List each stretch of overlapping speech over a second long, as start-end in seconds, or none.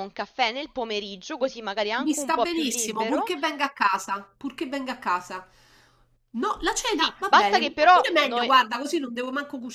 2.0-3.3, 6.9-8.5